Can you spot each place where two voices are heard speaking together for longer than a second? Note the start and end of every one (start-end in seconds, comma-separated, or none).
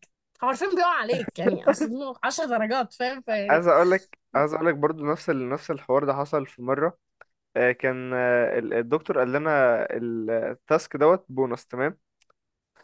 none